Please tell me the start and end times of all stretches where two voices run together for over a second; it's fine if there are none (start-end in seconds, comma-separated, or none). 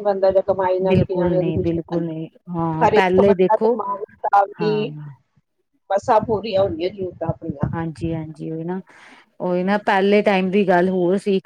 0.9-3.7